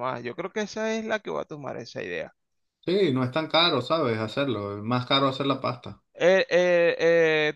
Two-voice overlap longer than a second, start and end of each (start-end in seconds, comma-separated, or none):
none